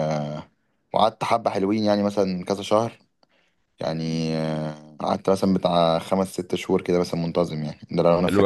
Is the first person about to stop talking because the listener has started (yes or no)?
yes